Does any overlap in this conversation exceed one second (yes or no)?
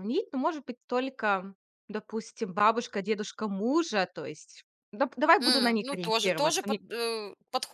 yes